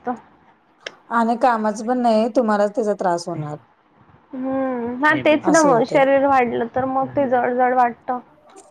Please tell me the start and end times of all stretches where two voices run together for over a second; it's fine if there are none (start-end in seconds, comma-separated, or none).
none